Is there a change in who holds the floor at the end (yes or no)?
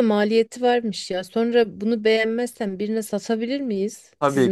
yes